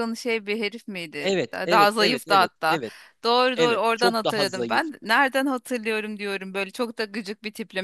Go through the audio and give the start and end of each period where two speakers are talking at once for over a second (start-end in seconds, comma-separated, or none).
1.2-2.8, 3.6-4.8